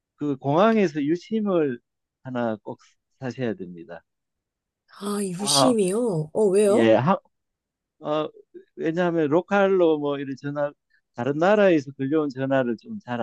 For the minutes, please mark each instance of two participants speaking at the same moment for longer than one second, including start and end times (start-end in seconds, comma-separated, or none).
none